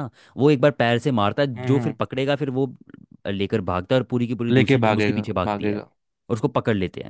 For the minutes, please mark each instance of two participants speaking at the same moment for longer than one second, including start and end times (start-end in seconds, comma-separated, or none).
4.5-5.9